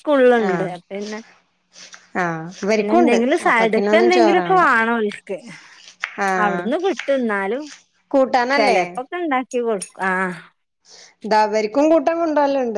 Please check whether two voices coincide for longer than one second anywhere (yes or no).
yes